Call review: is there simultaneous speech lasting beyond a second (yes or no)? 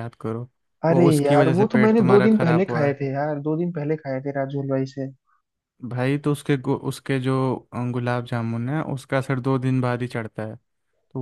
yes